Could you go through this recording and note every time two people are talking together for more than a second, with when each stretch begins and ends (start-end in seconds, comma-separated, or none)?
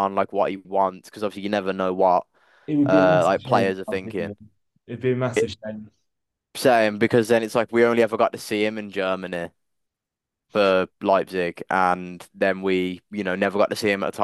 2.9-4.3